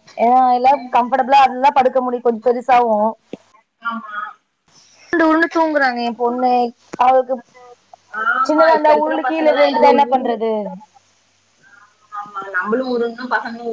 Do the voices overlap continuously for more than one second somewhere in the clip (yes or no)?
yes